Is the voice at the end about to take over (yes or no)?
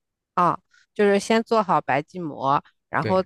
no